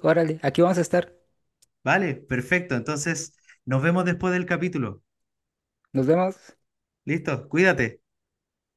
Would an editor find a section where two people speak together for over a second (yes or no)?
no